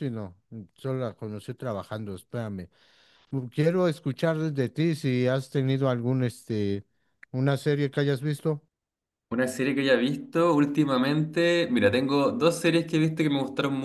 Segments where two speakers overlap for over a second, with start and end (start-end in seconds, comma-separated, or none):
none